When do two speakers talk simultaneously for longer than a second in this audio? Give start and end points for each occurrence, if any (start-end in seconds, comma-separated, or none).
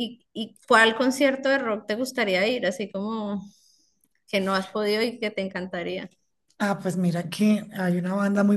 none